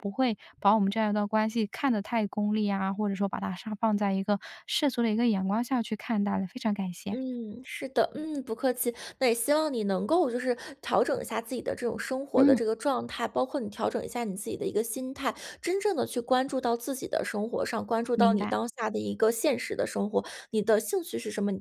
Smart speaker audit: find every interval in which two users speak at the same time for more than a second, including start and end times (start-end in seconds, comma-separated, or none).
none